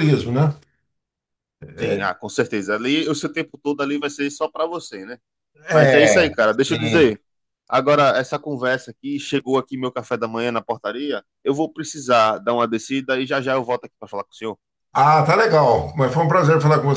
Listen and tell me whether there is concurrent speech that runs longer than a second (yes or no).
yes